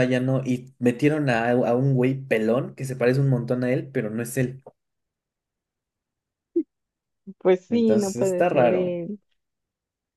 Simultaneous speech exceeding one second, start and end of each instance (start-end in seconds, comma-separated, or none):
7.7-9.0